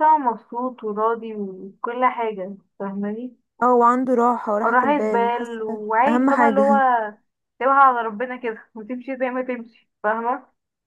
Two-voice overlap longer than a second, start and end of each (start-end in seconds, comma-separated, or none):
4.6-6.7